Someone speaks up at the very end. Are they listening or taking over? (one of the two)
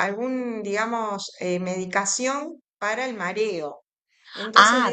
listening